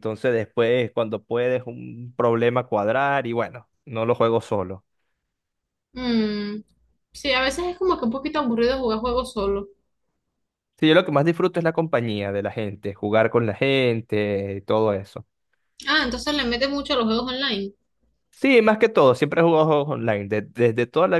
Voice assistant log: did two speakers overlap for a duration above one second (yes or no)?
no